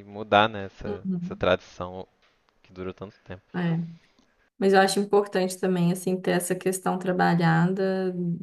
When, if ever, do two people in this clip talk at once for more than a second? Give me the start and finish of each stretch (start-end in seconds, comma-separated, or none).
none